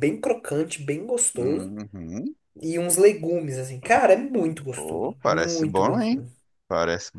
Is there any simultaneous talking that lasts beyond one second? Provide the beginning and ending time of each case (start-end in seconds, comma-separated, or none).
4.7-6.2